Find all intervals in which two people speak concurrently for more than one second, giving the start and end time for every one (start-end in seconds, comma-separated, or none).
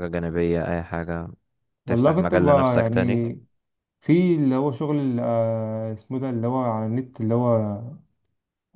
1.9-3.3